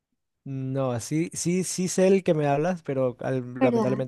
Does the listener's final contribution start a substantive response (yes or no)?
no